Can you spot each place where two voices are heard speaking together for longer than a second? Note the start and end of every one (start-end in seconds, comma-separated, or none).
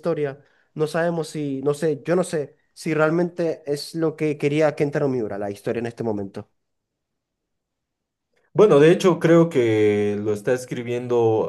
none